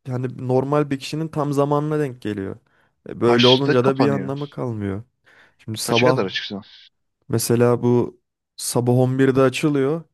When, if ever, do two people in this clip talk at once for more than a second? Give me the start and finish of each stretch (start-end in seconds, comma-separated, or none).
3.2-4.5